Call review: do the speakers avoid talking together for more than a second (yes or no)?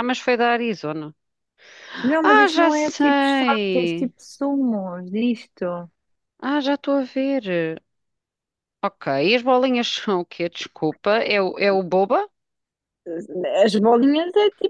no